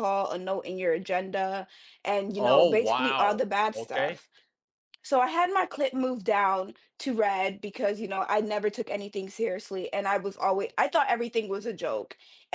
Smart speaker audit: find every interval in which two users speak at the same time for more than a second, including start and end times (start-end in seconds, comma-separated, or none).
2.4-4.2